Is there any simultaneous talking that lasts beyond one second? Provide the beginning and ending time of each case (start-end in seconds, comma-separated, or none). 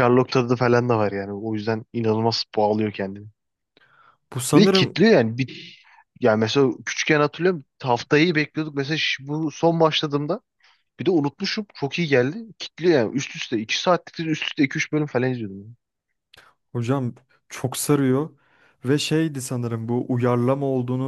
none